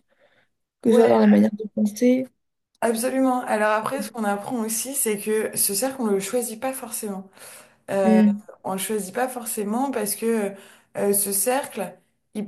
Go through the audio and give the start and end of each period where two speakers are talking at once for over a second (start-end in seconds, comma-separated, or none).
none